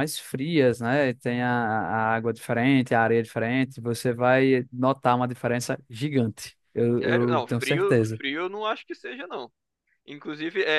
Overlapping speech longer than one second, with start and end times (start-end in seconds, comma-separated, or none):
7.0-8.2